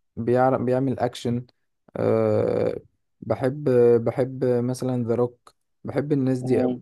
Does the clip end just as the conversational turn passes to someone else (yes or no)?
yes